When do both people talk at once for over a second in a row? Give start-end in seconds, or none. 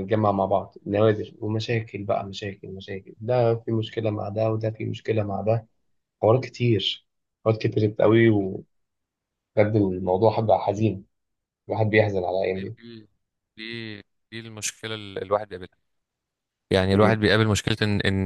none